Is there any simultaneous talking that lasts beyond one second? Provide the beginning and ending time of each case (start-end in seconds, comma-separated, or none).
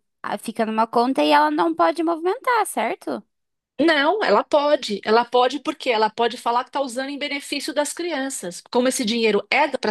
none